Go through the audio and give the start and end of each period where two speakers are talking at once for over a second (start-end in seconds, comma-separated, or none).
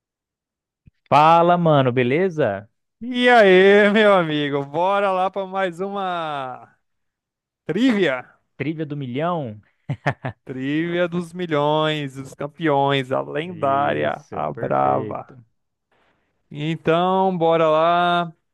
13.5-15.4